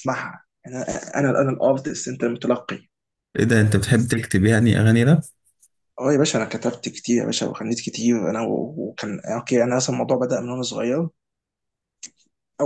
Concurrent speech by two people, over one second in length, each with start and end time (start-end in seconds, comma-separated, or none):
none